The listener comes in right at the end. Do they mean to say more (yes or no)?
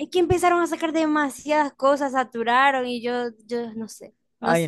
yes